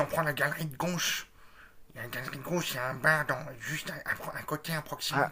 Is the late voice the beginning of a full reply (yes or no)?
yes